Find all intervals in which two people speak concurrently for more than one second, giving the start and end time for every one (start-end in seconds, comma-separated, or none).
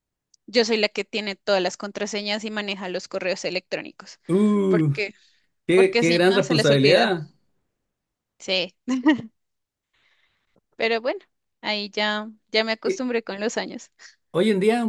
5.7-7.2